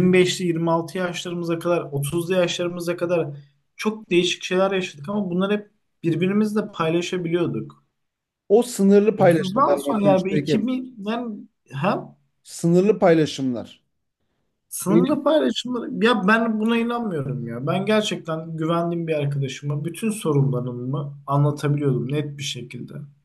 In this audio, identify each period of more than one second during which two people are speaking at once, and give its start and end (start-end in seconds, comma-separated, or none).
9.2-10.7